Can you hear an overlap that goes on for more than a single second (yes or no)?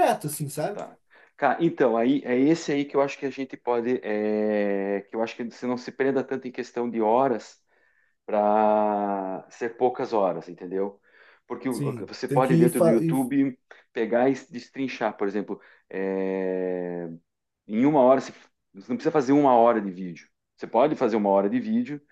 yes